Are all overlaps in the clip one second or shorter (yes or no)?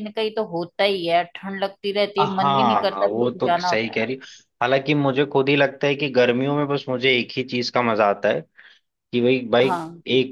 no